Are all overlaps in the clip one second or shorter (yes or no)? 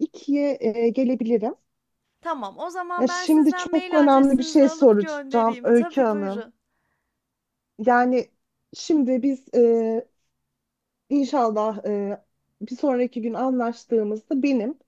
no